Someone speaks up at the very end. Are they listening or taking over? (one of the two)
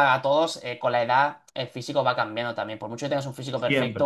listening